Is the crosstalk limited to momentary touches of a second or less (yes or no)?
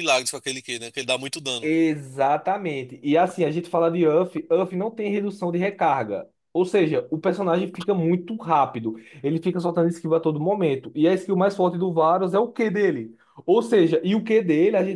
yes